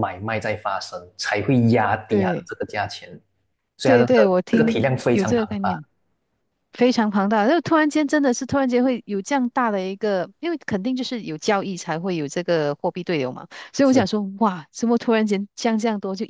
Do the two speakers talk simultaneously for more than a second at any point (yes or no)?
yes